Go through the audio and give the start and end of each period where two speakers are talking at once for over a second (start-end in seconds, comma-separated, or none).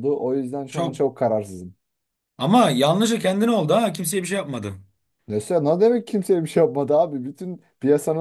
none